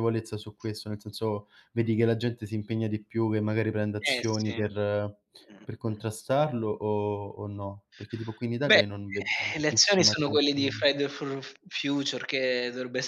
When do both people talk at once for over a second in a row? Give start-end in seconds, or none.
9.5-10.8